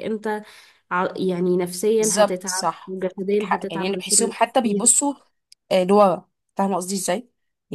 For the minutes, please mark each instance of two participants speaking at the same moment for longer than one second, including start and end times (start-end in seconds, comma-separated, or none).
2.0-4.9